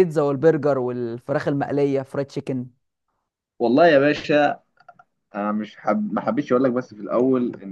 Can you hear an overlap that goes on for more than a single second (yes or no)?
no